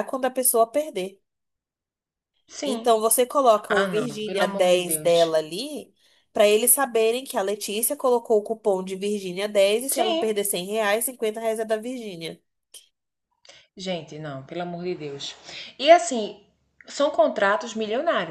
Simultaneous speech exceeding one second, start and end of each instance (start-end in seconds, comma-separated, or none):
3.7-5.3